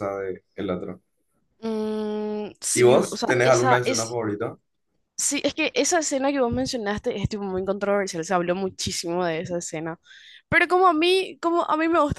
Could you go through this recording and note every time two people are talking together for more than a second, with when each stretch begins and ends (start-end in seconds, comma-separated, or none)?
2.7-4.2